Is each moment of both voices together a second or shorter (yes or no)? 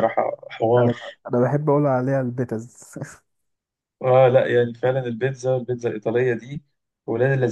yes